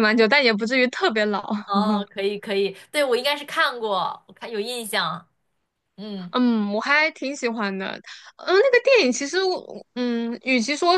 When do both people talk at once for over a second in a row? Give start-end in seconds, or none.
none